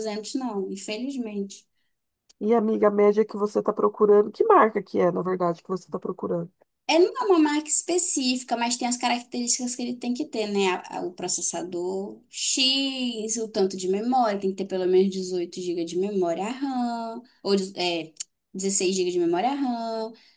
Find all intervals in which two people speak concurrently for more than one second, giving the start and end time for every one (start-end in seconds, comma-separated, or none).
none